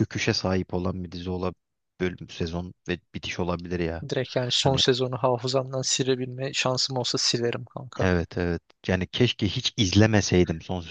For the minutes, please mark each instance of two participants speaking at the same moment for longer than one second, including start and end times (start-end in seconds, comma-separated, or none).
none